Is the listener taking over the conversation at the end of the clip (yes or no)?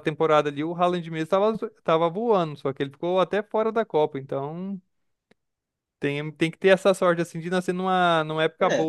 no